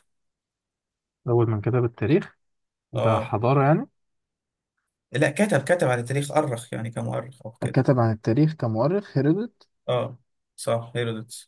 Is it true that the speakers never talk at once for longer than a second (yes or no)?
yes